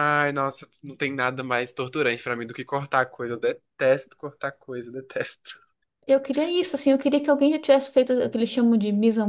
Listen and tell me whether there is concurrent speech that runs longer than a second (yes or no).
no